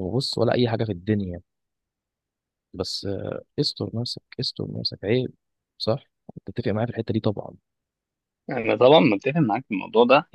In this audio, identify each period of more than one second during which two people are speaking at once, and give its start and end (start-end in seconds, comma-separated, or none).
none